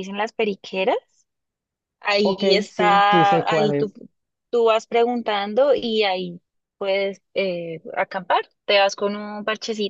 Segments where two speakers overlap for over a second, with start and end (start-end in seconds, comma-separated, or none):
2.2-3.9